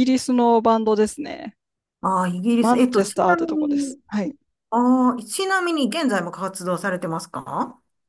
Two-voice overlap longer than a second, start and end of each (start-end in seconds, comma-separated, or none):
2.6-4.0